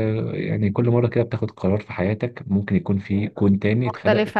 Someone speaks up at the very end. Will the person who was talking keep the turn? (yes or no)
no